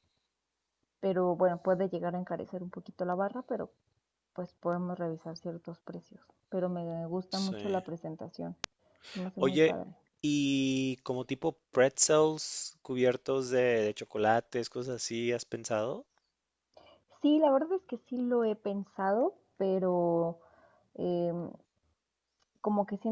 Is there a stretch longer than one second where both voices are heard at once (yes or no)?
no